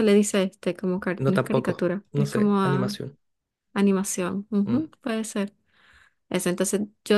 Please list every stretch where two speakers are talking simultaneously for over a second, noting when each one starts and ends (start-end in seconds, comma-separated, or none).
1.2-3.0